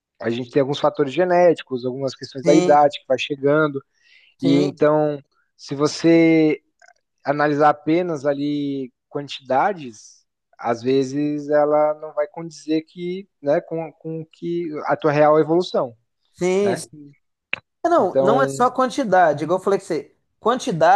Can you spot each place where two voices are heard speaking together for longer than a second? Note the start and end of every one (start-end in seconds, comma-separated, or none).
none